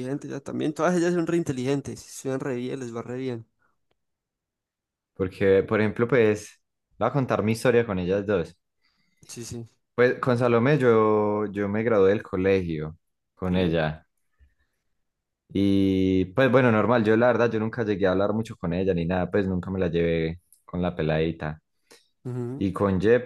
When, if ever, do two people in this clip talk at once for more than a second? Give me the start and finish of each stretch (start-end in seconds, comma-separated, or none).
none